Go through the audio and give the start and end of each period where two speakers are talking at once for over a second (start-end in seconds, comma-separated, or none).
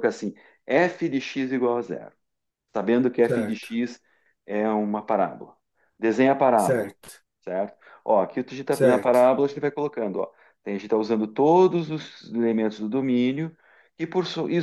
none